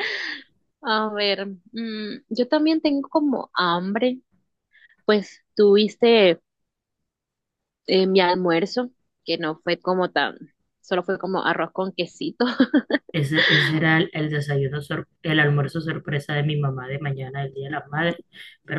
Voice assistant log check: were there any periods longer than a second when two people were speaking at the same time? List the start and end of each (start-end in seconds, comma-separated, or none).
none